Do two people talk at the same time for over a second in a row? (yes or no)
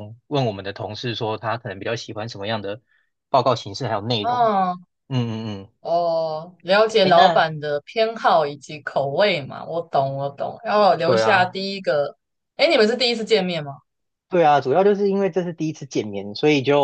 no